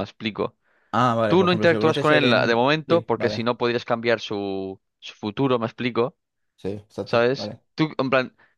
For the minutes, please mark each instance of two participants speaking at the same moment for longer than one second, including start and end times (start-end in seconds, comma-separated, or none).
1.3-3.5